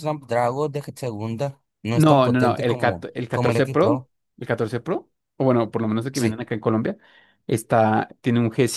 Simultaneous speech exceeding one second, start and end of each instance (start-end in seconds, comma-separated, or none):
1.9-4.1